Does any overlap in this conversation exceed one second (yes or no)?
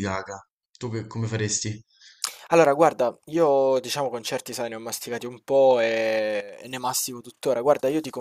no